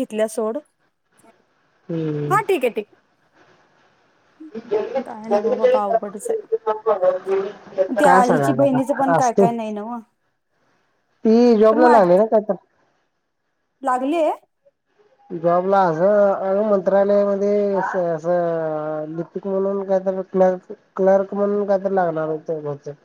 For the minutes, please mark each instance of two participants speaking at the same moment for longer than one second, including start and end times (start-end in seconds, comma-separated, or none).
8.0-9.4